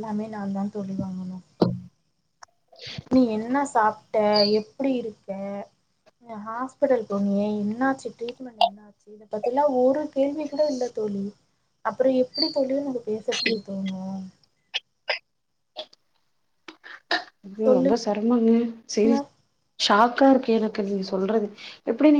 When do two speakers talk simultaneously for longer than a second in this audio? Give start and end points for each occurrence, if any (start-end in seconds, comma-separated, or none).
none